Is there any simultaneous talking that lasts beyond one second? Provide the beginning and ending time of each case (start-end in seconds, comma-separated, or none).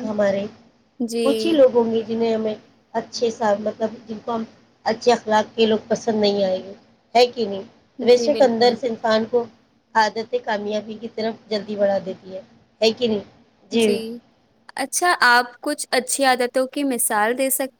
none